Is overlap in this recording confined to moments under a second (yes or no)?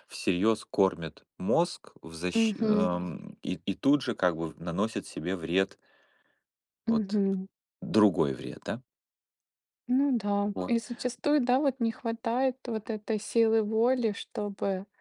yes